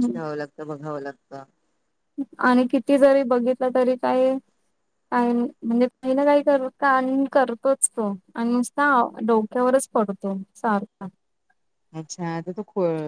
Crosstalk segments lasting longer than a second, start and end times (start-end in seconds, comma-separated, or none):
none